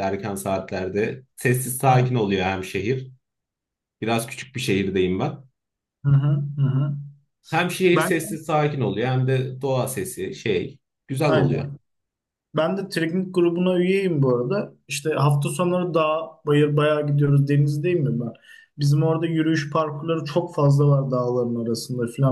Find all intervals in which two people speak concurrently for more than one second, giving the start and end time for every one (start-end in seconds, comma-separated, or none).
none